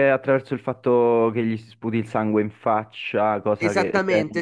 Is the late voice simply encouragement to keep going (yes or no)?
no